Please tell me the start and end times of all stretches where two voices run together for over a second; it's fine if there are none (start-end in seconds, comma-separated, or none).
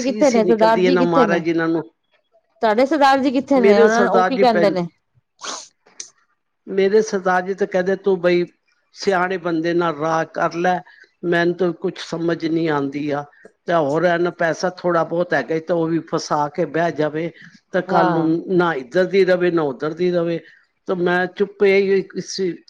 none